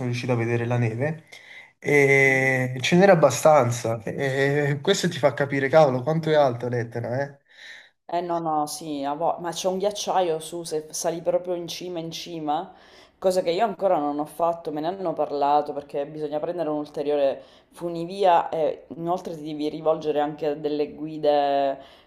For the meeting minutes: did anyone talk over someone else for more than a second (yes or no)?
no